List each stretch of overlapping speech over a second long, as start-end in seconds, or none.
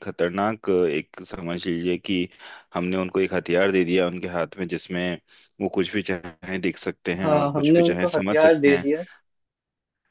7.2-8.9